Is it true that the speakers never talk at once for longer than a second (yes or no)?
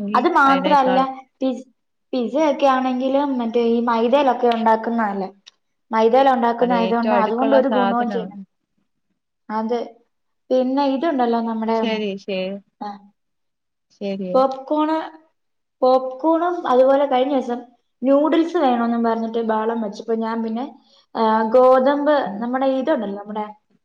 no